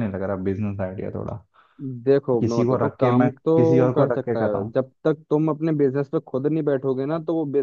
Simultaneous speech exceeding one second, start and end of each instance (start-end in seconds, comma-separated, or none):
2.4-4.7